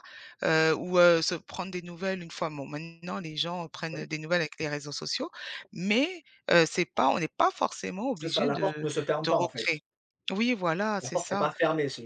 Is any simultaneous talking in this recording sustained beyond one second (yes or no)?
yes